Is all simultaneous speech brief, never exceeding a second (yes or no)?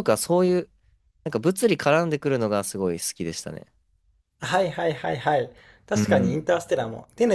yes